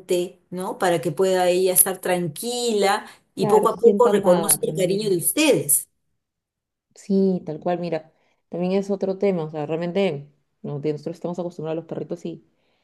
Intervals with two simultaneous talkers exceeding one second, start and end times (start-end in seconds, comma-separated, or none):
3.4-5.2